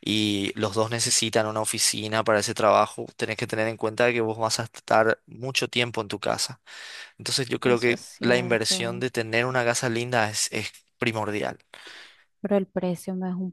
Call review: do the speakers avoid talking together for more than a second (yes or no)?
no